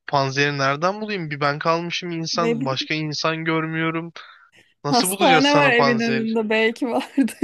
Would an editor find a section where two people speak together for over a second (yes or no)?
yes